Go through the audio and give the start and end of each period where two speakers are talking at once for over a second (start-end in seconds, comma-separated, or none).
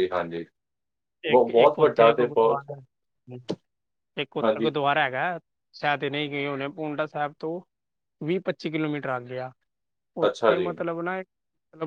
1.3-2.6